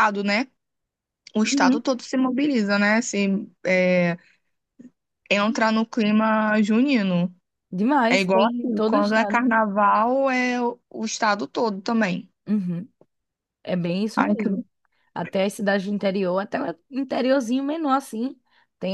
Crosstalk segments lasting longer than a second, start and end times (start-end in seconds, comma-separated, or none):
8.1-9.4